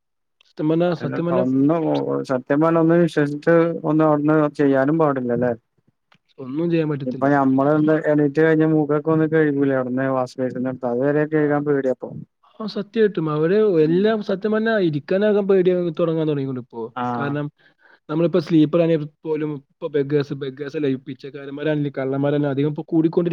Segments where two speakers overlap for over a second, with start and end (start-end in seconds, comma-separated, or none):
none